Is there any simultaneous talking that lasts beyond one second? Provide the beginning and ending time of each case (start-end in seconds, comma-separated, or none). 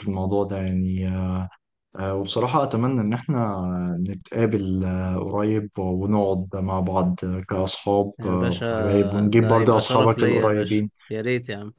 9.3-10.9